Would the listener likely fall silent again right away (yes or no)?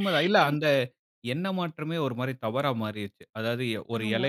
yes